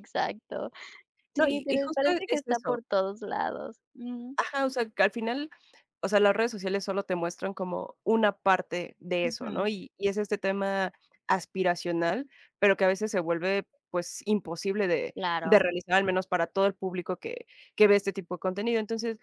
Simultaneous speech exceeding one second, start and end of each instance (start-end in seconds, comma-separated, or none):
1.4-2.8